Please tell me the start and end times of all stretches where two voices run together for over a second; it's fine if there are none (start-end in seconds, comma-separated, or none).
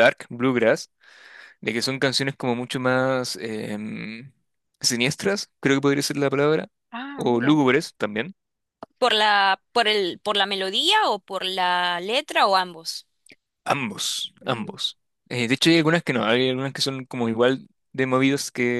none